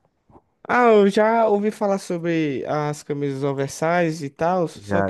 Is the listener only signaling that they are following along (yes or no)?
no